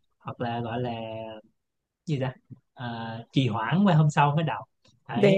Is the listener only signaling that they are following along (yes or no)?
yes